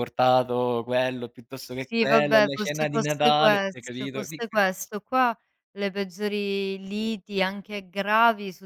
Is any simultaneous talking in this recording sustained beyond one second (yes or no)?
yes